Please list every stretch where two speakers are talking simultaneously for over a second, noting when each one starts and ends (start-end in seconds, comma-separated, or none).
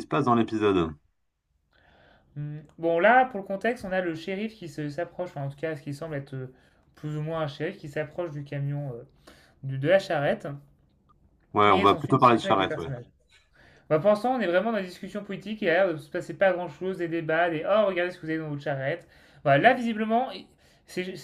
11.7-12.9